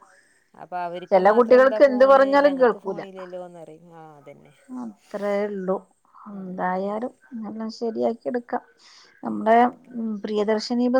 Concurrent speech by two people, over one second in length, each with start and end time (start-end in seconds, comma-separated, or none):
1.1-3.0